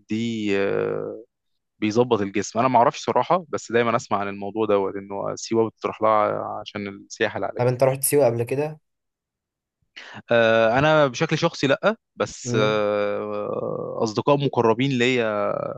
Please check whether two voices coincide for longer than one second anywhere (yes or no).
no